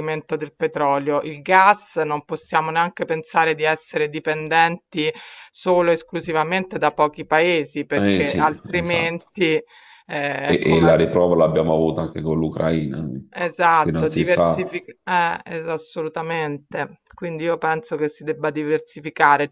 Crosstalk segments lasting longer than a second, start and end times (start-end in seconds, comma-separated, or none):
7.9-9.3, 13.3-14.8